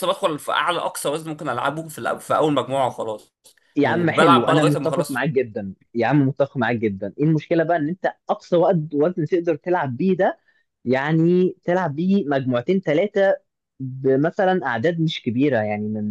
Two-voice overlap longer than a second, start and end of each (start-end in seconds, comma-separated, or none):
3.8-5.2